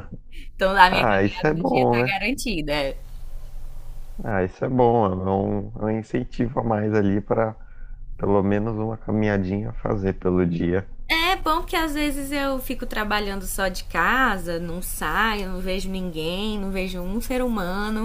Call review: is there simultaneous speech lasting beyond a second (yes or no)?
yes